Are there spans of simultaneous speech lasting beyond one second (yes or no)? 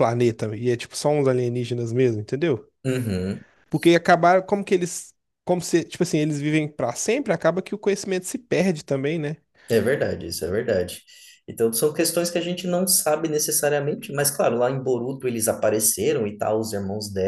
no